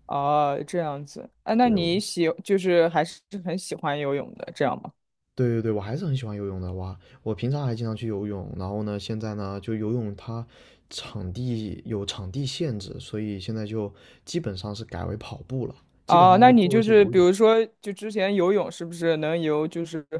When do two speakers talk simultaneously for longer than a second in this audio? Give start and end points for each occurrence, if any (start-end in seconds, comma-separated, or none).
16.1-17.3